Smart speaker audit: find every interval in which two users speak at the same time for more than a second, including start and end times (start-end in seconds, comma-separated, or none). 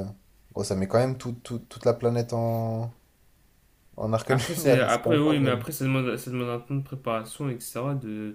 4.3-5.7